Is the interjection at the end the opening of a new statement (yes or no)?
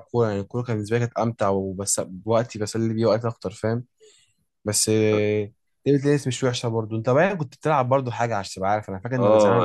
yes